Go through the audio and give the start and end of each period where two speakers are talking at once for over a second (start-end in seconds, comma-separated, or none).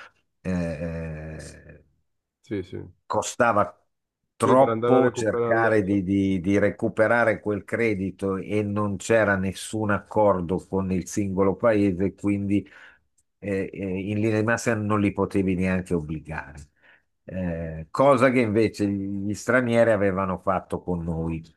4.4-5.8